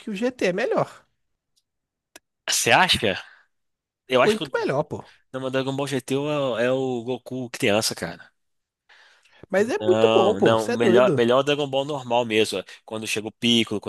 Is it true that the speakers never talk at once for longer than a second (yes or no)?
no